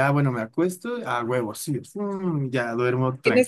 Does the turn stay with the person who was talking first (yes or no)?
no